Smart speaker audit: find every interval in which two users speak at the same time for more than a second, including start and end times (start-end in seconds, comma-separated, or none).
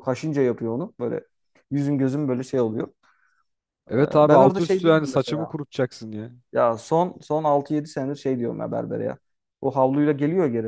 4.0-5.5